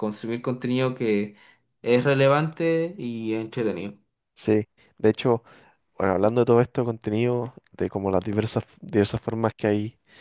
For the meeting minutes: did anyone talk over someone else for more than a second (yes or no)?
no